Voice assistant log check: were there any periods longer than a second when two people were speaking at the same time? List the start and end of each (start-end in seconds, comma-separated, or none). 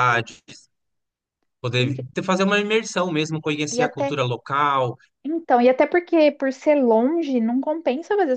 none